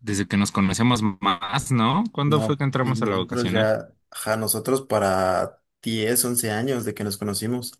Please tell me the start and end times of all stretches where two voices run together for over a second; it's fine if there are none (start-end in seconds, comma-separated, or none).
2.2-3.7